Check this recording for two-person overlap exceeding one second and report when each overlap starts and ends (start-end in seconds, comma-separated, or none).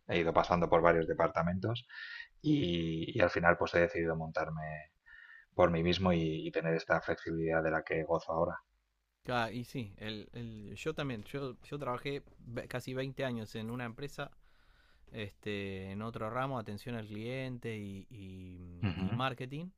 none